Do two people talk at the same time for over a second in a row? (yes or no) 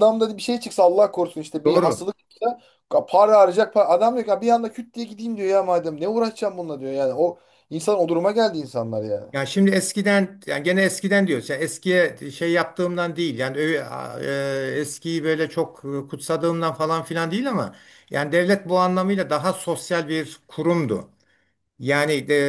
no